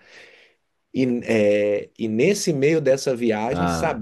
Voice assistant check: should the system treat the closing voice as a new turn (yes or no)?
no